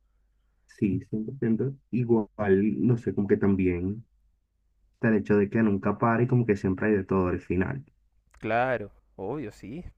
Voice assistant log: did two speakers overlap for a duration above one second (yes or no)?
no